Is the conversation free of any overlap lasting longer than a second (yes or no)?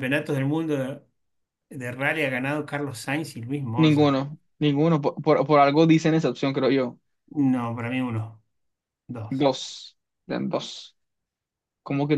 yes